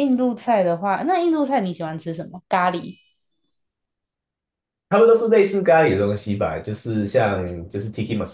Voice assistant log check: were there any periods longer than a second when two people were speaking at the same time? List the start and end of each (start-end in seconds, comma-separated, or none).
none